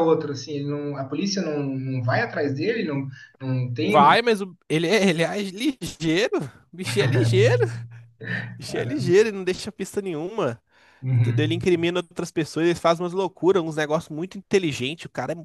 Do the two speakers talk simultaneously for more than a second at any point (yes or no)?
no